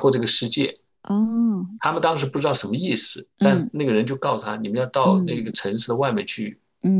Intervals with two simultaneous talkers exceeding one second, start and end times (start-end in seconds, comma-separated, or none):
none